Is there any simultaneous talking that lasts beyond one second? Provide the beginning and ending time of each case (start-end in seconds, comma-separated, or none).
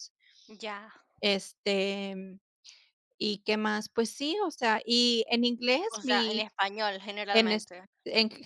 none